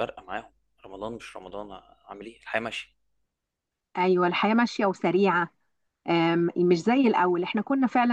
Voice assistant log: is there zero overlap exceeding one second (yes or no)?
yes